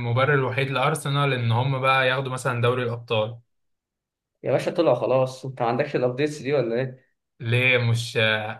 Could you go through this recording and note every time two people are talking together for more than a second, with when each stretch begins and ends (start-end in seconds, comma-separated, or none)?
none